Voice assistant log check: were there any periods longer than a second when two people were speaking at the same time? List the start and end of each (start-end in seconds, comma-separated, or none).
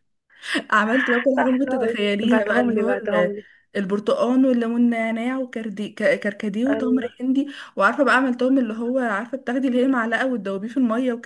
1.4-3.3